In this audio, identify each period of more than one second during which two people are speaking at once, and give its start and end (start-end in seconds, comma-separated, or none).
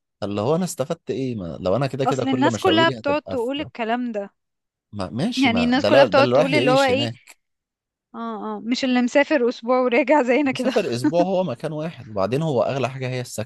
2.0-3.5, 5.4-7.1